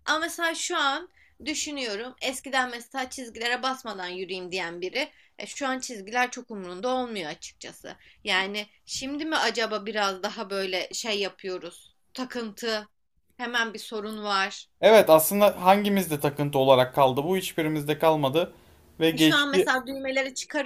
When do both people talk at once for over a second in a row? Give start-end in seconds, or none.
none